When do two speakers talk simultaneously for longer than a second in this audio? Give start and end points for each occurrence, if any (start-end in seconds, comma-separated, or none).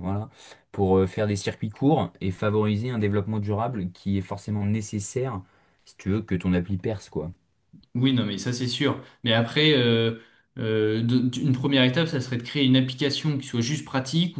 none